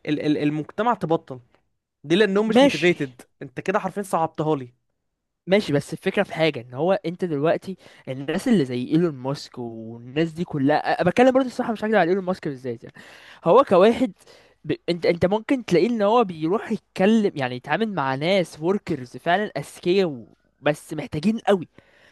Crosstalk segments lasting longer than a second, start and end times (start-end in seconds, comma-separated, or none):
none